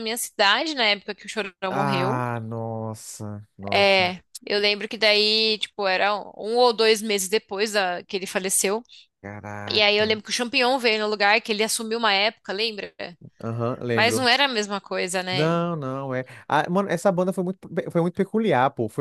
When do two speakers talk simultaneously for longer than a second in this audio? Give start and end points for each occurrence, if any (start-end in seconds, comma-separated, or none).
none